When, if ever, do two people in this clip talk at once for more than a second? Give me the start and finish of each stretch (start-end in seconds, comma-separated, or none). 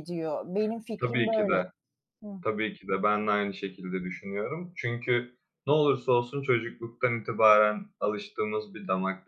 none